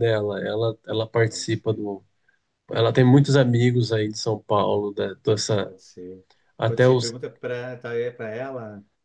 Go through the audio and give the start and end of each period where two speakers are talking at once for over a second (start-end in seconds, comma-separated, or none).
none